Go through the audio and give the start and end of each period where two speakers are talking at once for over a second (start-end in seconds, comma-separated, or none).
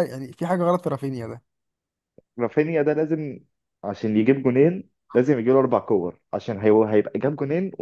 none